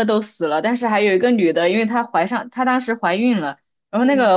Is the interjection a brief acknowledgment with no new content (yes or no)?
yes